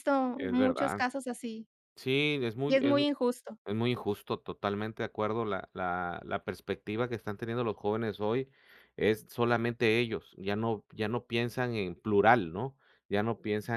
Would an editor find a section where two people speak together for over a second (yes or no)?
no